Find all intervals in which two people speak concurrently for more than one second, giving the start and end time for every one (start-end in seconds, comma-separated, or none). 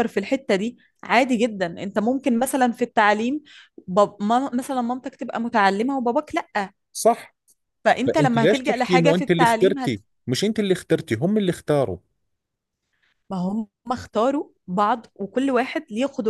8.1-10.0